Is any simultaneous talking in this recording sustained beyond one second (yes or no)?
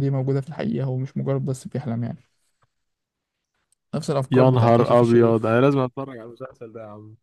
yes